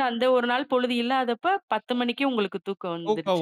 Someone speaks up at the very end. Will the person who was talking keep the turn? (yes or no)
no